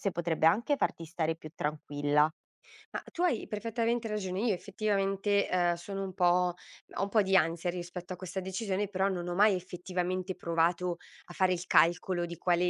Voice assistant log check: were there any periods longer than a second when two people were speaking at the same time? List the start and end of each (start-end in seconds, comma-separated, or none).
none